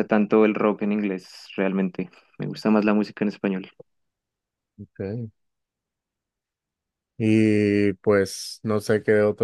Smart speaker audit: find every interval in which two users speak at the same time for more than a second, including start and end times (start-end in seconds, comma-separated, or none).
none